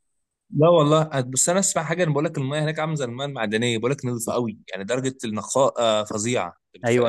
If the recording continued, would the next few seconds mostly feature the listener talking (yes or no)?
yes